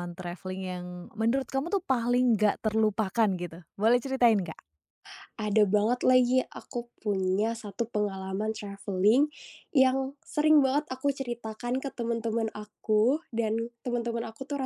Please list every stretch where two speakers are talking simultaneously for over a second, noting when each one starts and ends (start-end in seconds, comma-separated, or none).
none